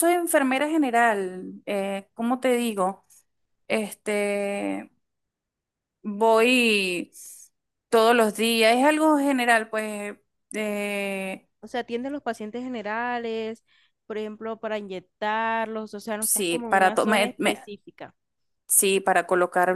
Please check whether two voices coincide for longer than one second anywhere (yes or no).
yes